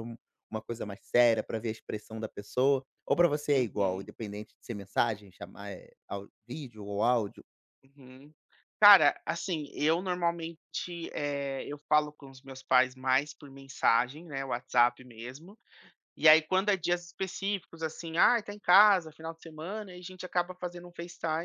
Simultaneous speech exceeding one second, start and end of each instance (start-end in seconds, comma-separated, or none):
none